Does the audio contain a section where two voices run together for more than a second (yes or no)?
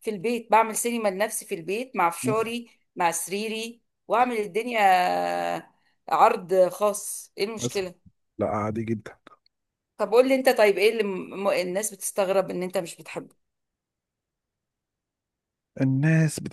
no